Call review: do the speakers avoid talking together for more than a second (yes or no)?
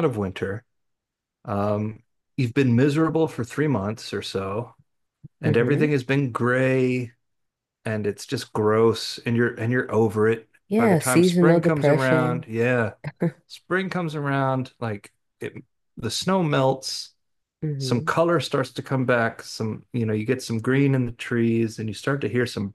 no